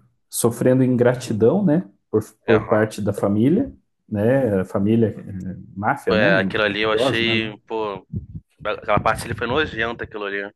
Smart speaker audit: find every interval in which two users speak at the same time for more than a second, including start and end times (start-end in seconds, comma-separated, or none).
6.1-7.6